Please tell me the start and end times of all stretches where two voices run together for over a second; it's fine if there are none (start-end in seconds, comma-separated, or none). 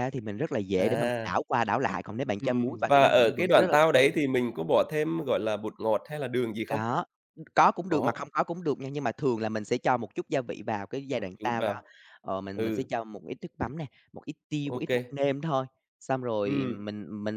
2.4-4.2